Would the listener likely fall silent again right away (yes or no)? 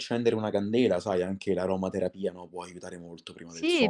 no